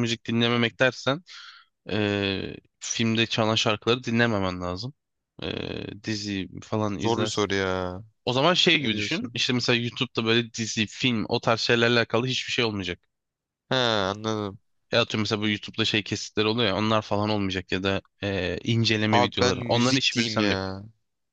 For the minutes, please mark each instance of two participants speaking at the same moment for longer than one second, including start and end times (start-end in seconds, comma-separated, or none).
19.1-20.6